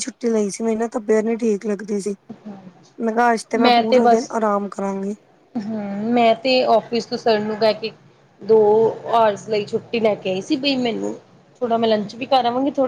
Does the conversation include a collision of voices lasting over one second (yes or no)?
no